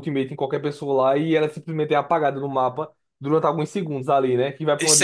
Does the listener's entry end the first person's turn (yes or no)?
yes